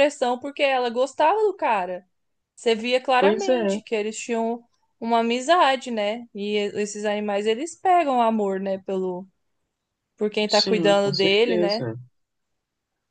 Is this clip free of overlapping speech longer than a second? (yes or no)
no